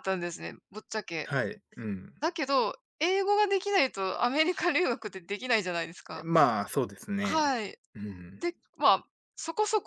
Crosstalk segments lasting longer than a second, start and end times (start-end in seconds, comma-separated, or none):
none